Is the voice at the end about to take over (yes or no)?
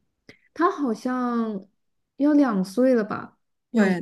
yes